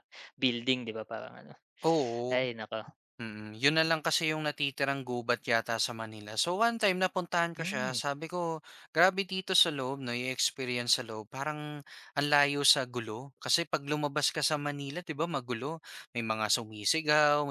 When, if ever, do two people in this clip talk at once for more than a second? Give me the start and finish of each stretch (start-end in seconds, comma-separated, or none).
none